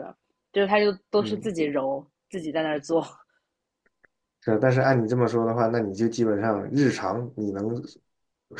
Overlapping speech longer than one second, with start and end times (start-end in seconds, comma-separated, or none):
none